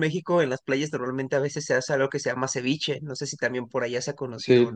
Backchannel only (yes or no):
no